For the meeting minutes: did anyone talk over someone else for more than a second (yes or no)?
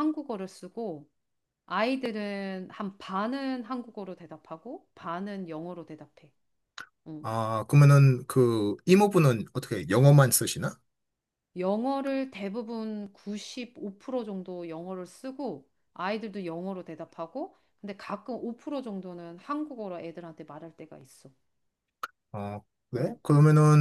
no